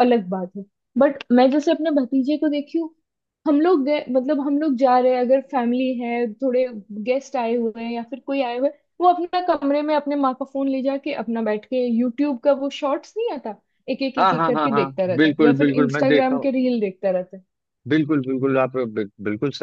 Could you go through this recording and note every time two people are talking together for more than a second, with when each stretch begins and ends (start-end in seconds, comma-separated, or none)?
14.2-16.4